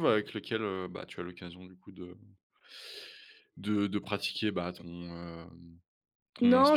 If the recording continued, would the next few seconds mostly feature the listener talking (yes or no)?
yes